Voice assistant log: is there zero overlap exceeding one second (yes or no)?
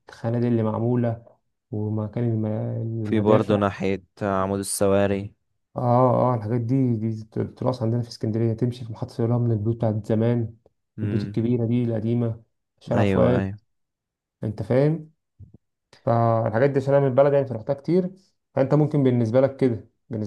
yes